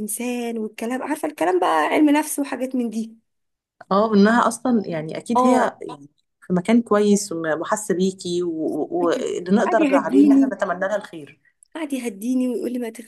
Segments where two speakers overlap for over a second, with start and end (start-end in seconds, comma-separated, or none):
9.1-10.6